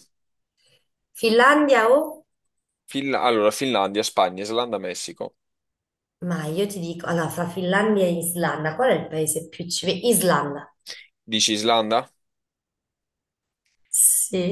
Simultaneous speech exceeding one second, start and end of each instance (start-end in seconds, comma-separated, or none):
none